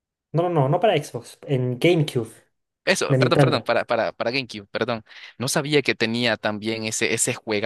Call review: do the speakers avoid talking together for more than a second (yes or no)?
yes